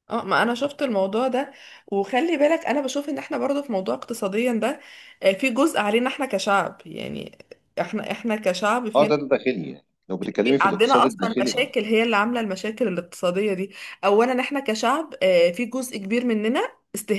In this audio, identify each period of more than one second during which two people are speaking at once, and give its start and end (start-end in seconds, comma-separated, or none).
10.2-11.7